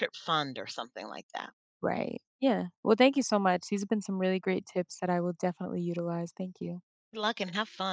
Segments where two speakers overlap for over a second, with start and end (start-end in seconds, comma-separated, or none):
none